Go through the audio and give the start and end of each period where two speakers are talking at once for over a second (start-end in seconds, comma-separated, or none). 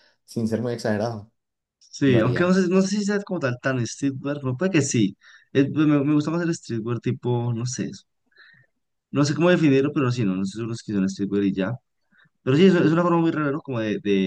none